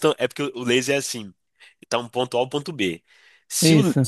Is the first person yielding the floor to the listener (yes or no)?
no